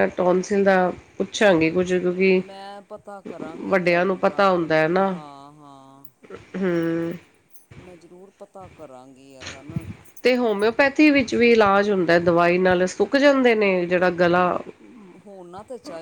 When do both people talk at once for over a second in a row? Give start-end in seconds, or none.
3.7-5.1